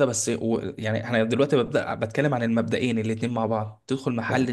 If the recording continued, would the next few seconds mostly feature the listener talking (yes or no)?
no